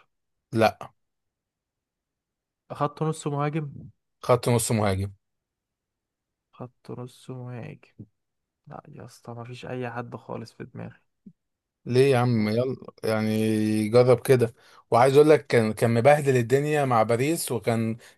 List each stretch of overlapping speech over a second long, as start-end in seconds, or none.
none